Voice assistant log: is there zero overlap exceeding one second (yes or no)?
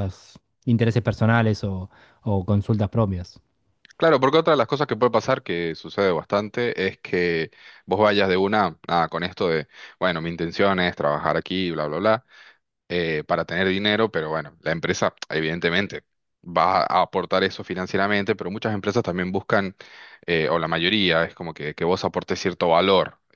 yes